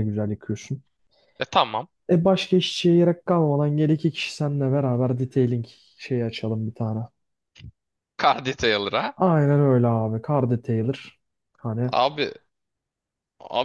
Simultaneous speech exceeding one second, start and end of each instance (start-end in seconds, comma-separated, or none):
none